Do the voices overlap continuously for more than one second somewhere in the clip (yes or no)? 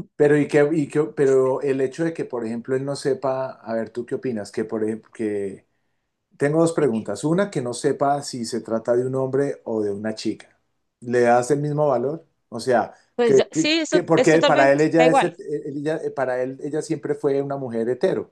yes